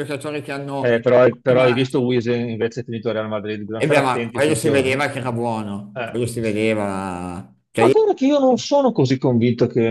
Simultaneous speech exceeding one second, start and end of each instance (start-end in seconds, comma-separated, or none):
3.8-5.0